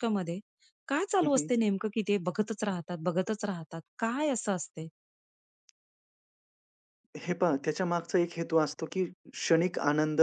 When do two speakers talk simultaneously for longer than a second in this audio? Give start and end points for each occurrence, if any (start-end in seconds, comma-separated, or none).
none